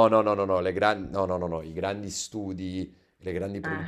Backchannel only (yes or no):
yes